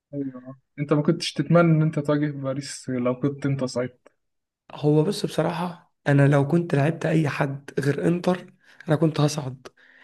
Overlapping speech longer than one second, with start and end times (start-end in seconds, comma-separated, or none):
none